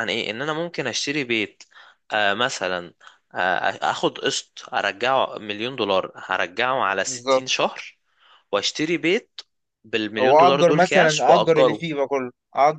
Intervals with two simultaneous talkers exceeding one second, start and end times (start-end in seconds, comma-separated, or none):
10.2-11.8